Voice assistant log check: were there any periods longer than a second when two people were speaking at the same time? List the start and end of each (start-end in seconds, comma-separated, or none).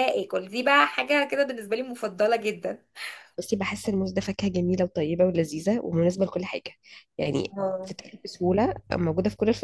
none